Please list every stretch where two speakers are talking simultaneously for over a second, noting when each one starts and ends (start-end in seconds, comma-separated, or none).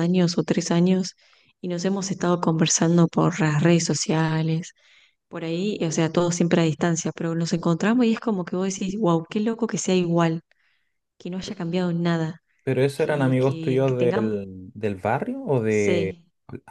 12.9-14.3